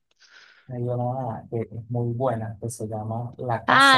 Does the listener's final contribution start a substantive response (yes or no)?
yes